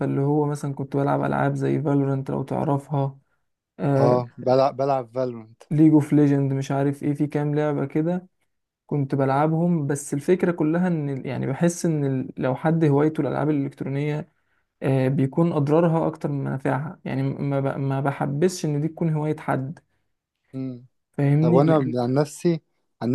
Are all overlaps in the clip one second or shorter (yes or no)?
yes